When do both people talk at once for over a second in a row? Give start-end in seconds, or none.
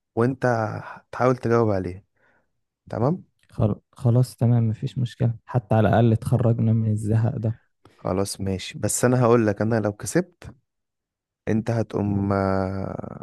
none